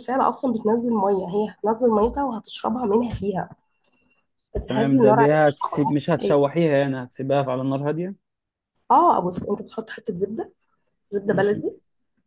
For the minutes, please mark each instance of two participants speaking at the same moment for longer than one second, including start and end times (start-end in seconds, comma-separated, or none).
4.7-6.4